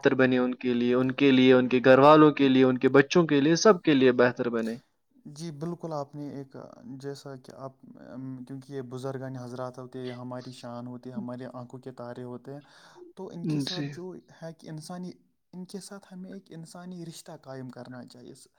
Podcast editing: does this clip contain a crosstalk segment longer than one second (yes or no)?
no